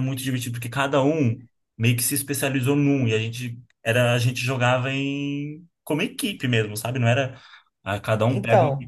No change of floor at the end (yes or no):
yes